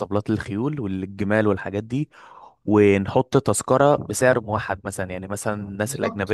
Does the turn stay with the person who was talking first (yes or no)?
yes